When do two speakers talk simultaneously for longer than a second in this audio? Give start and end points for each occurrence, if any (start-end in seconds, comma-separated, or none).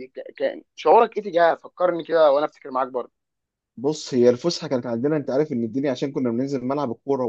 none